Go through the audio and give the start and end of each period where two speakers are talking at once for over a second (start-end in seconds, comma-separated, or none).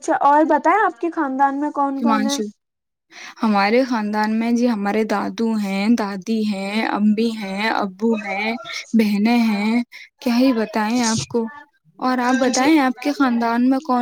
none